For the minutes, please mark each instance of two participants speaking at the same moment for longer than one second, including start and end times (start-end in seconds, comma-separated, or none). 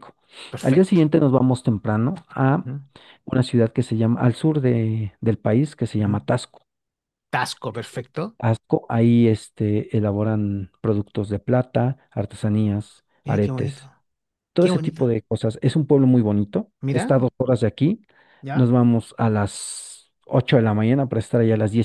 none